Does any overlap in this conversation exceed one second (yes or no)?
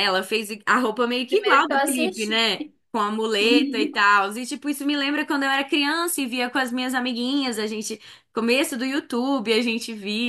yes